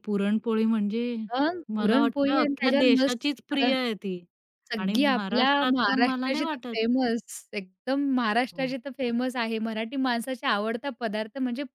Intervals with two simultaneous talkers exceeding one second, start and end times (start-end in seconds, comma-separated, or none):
1.8-3.6, 4.8-6.8